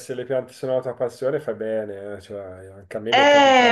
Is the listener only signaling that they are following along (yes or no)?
no